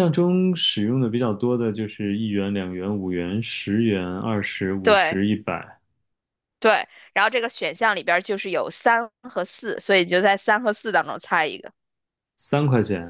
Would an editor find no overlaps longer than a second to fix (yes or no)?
yes